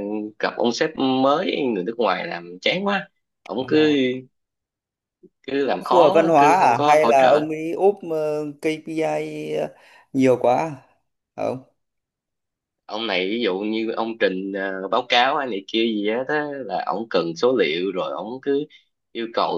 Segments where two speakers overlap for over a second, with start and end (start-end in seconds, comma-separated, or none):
5.7-7.4